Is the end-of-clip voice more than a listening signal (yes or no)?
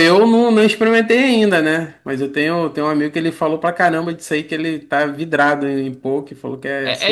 yes